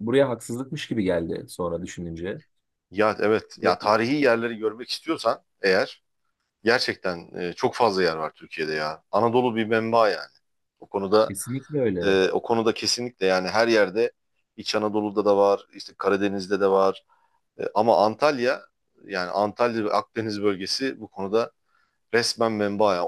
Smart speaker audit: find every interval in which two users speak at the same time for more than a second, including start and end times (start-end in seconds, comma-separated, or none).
none